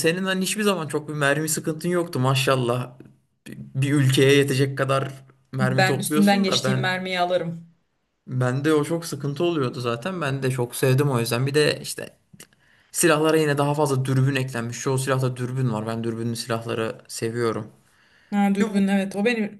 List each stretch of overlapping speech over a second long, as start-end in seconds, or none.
5.6-6.9